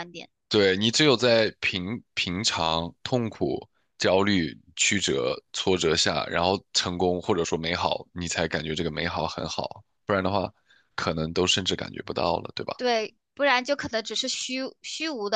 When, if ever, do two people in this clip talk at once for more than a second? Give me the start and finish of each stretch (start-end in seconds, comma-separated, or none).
none